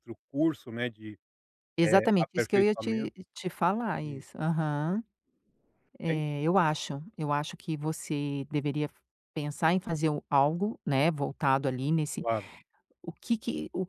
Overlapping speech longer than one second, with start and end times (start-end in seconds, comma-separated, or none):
1.8-3.1